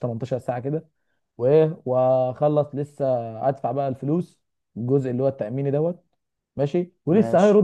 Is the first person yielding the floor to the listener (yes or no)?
no